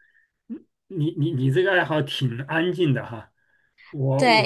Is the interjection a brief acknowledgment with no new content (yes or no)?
no